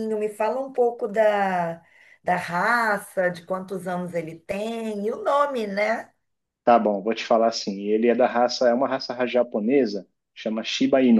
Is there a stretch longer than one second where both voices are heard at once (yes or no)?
no